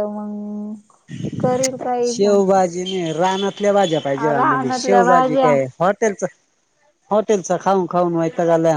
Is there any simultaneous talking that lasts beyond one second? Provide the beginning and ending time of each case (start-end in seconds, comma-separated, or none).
4.4-5.6